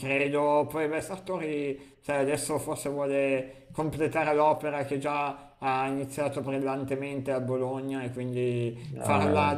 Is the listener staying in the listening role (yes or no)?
yes